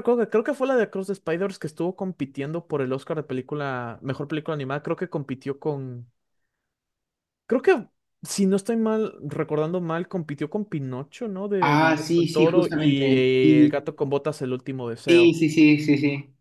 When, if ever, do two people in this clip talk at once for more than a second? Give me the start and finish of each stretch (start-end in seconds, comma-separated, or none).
11.6-13.8